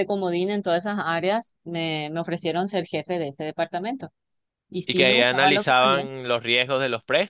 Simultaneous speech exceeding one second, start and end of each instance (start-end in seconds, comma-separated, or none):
4.8-6.0